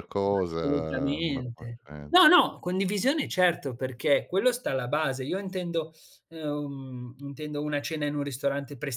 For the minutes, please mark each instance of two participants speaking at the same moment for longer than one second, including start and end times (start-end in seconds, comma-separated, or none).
0.6-2.3